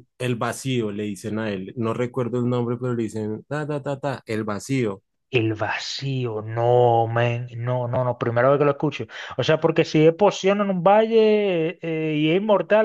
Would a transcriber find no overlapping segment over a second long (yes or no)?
yes